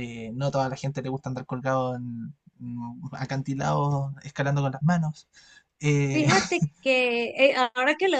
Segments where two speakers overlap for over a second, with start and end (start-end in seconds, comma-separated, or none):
none